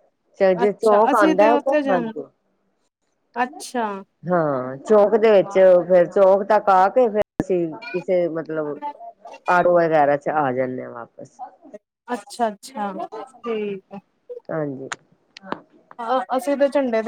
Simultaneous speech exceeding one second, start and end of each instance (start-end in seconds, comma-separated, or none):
0.6-2.1